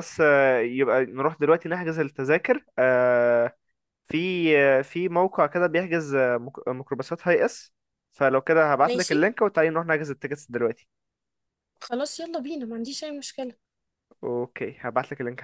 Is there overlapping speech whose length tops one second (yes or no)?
no